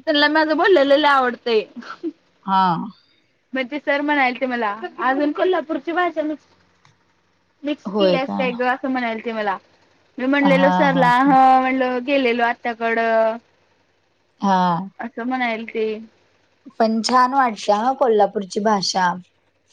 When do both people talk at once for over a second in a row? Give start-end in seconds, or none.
none